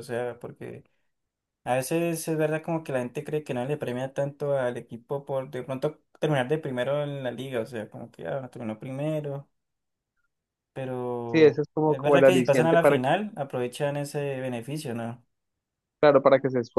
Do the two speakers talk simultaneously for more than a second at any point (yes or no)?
yes